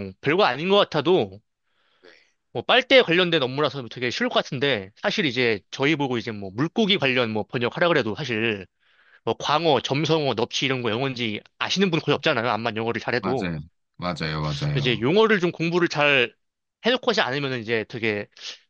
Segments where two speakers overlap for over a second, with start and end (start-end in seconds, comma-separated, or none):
none